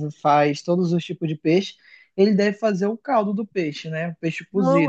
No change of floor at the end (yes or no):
no